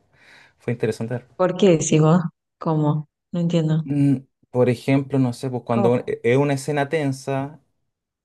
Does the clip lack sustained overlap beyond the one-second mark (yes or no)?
yes